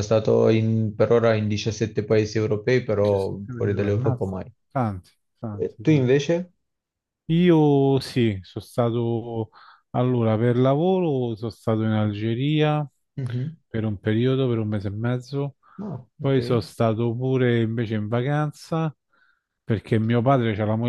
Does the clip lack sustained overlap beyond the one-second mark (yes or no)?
no